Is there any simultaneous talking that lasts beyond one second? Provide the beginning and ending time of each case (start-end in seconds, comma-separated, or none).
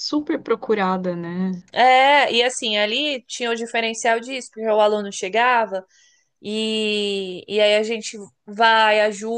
none